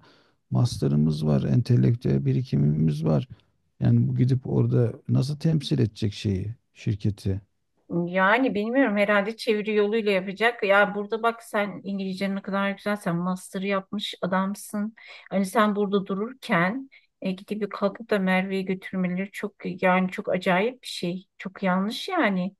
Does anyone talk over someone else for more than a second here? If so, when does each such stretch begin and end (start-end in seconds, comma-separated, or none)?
none